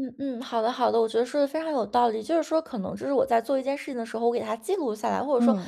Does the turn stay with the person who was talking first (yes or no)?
yes